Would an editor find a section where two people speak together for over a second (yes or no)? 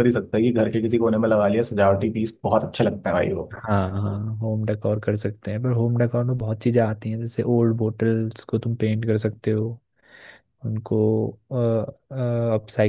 no